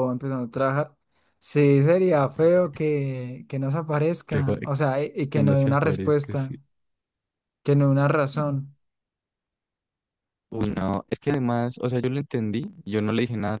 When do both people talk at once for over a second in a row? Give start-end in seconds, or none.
5.3-6.5